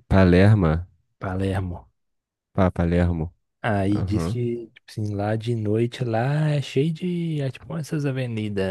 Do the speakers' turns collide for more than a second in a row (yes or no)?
no